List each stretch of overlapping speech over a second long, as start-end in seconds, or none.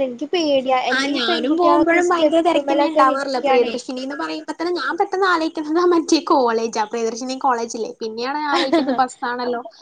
2.1-3.7